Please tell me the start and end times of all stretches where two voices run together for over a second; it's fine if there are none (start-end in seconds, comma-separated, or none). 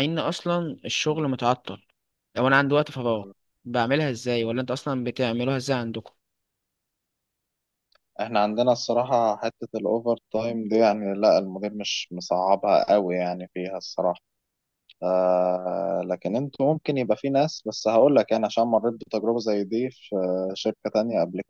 none